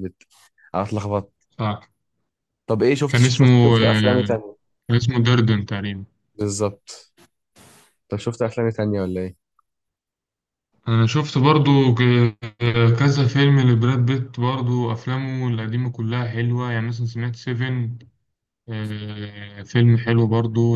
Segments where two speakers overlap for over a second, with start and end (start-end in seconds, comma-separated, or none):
3.1-4.4